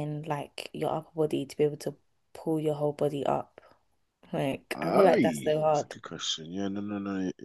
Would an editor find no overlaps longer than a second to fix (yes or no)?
no